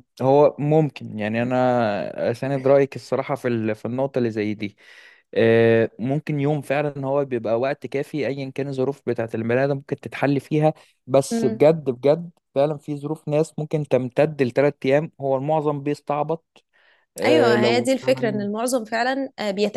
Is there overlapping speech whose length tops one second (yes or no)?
yes